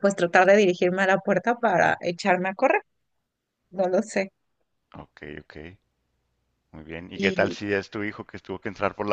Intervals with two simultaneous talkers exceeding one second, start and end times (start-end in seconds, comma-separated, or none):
none